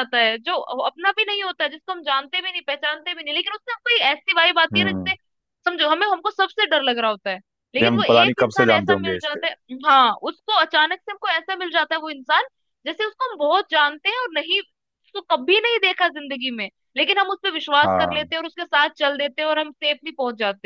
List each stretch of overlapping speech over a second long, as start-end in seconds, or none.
7.8-9.4